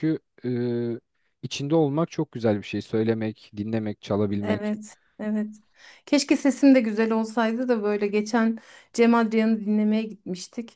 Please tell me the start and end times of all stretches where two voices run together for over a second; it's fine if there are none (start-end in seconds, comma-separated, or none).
none